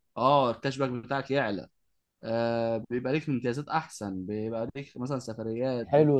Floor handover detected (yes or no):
yes